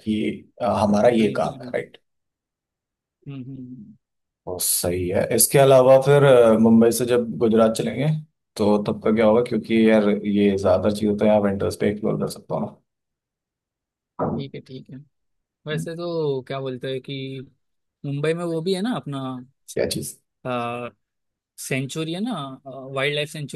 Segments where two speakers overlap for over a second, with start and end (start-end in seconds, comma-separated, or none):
none